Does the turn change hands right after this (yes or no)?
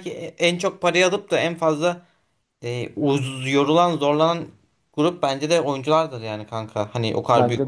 no